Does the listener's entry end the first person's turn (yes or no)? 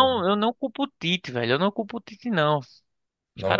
no